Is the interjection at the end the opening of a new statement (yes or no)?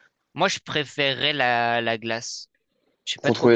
yes